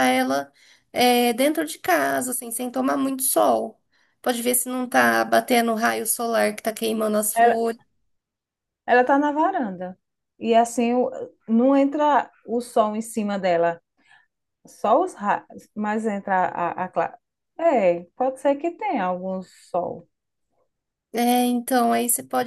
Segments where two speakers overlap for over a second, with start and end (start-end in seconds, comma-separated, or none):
none